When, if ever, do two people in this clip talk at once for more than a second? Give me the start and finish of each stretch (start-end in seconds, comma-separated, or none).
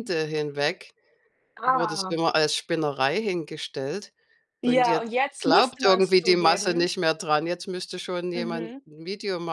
4.7-6.9